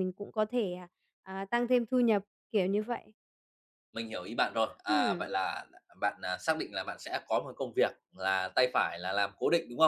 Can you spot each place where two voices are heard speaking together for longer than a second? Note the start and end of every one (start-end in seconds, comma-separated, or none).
none